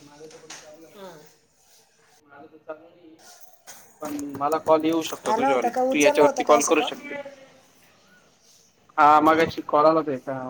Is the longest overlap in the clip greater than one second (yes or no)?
yes